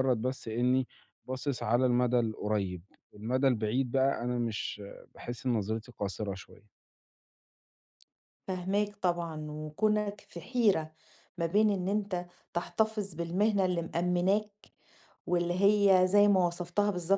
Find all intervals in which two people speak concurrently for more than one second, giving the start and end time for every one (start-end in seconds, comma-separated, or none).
none